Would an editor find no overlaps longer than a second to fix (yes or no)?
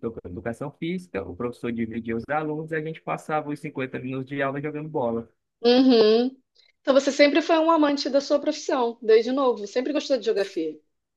yes